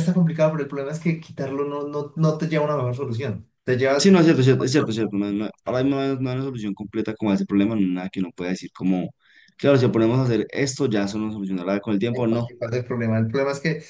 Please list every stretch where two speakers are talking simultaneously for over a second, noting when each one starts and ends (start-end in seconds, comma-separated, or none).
none